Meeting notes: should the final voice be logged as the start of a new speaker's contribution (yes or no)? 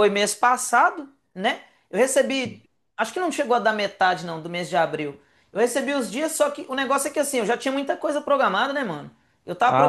yes